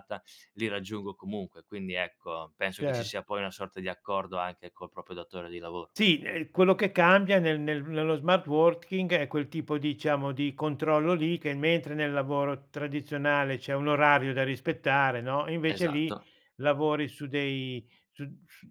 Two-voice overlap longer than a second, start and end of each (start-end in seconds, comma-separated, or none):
none